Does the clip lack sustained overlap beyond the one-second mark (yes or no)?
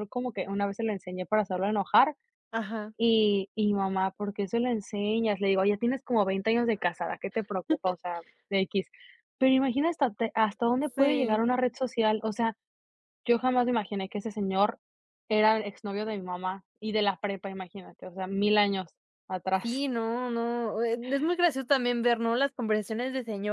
yes